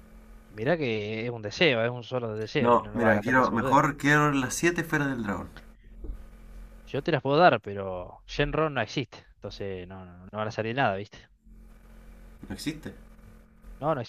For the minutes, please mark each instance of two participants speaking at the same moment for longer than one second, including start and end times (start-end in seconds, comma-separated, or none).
2.6-3.8